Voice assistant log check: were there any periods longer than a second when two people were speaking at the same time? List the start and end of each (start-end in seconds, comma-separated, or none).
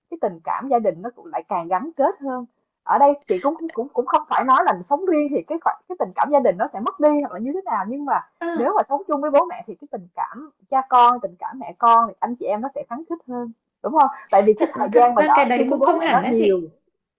14.6-16.6